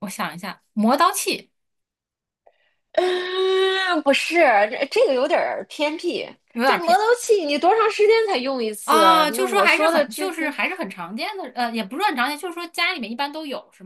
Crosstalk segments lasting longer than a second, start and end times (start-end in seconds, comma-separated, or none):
8.8-10.5